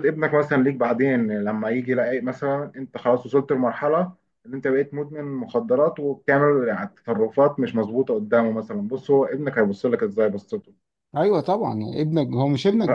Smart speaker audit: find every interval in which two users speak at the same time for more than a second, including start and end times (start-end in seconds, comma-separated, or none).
none